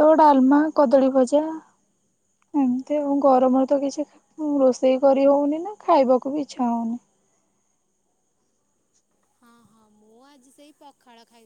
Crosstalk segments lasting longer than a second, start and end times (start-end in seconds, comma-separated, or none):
none